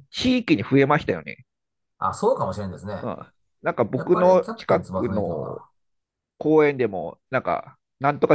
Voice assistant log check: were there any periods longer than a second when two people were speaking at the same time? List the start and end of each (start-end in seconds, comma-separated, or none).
3.9-5.6